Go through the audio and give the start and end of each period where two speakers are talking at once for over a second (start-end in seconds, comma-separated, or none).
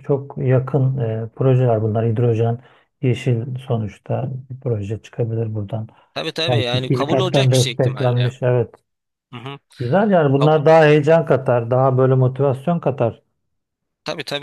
6.5-8.3